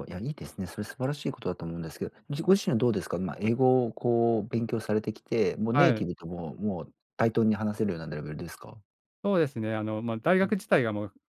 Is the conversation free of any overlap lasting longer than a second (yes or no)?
yes